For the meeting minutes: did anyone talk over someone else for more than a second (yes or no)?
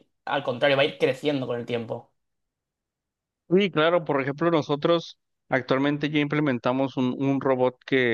no